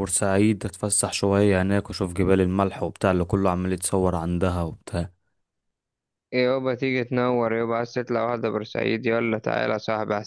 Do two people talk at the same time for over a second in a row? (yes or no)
no